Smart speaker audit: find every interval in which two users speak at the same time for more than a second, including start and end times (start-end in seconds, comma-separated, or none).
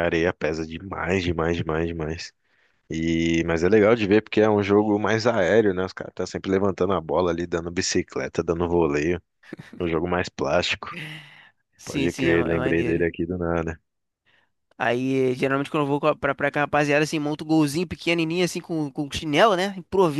11.8-13.0